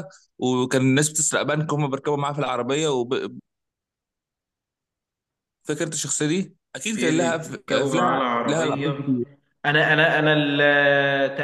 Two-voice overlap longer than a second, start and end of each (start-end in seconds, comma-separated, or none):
6.9-8.9